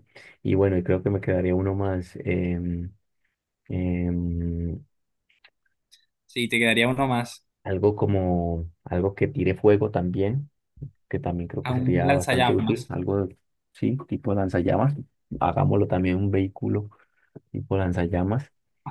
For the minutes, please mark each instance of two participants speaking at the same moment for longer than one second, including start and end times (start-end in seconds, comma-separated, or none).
11.6-12.9